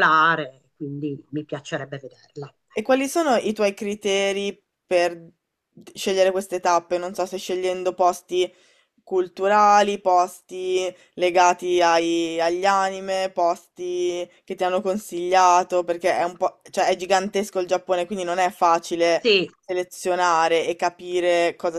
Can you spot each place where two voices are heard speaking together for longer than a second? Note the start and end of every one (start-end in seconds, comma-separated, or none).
none